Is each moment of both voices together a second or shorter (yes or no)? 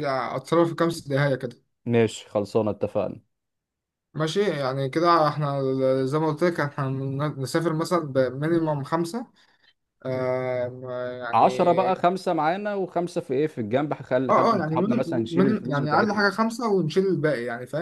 no